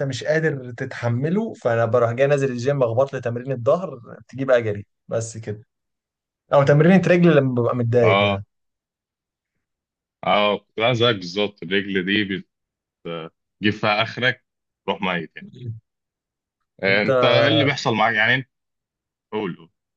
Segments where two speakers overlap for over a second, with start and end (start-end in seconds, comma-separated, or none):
none